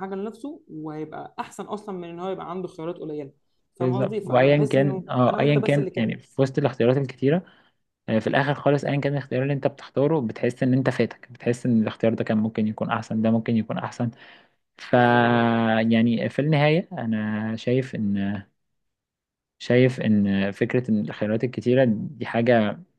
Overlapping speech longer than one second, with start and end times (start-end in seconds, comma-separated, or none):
3.8-6.2